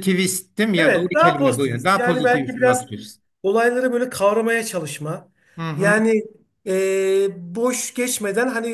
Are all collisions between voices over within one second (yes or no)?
no